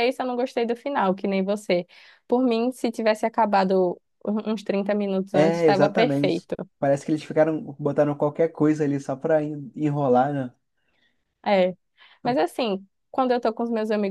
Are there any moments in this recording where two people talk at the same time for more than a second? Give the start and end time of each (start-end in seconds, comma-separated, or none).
5.3-6.5